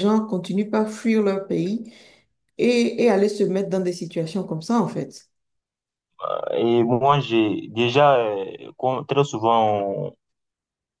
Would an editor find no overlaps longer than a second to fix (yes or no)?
yes